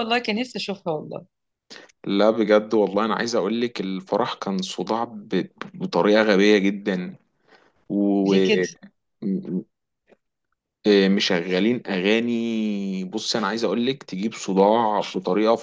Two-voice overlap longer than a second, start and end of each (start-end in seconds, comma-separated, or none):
none